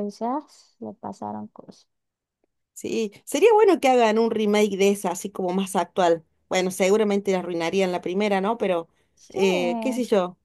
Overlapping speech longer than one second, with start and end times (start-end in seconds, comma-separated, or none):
none